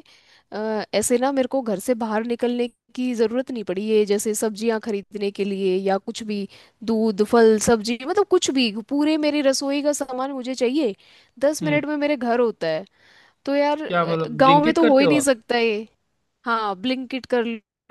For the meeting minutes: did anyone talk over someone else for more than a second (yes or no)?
yes